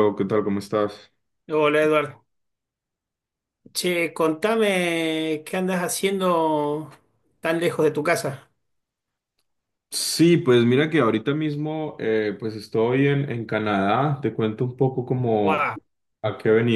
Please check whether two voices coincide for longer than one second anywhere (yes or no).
no